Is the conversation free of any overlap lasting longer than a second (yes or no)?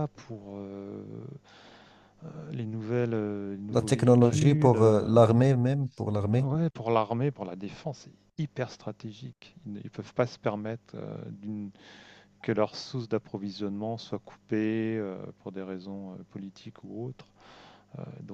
no